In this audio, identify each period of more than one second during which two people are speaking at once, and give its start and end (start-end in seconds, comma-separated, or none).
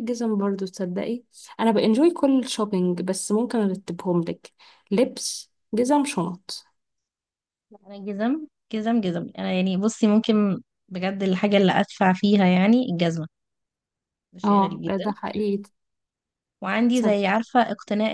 none